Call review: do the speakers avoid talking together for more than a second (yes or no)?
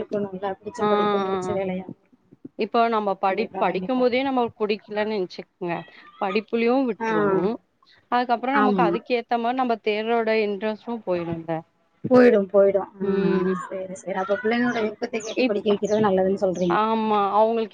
yes